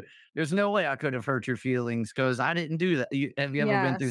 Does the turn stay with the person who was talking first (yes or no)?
no